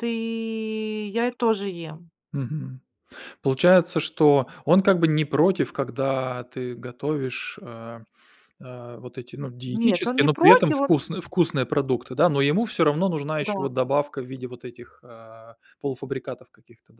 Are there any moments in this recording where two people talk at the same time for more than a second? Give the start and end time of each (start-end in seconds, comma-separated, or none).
9.7-11.0